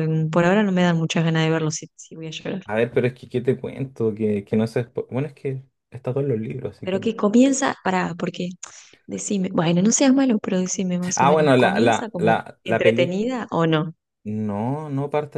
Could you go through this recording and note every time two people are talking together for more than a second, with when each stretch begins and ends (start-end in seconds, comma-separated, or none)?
11.2-13.2